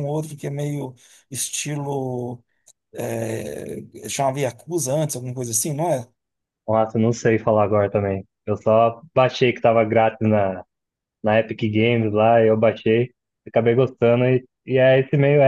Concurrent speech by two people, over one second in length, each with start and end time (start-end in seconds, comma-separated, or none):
none